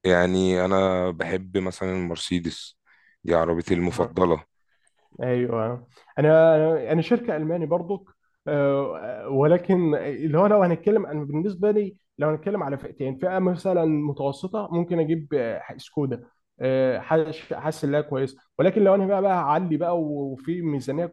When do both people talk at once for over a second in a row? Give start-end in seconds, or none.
none